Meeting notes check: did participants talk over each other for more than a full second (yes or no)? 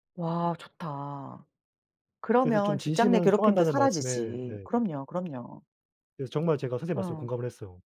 yes